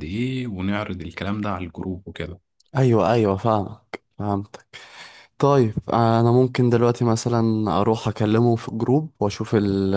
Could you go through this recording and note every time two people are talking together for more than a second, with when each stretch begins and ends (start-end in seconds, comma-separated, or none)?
none